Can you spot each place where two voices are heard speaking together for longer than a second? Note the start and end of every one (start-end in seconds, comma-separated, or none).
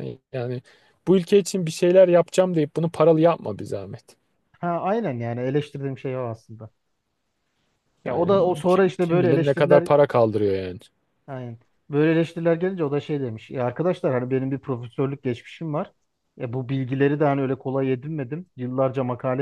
8.1-9.9